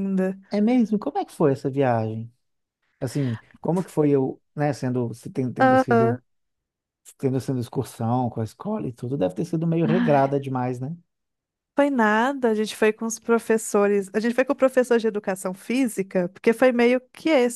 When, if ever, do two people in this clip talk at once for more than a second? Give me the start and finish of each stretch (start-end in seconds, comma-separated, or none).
none